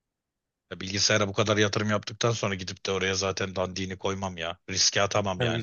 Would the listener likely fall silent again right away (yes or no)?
no